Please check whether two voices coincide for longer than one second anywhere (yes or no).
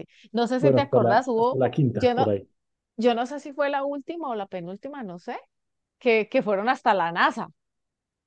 yes